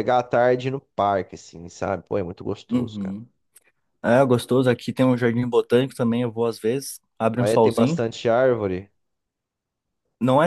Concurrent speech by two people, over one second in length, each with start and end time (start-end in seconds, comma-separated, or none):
none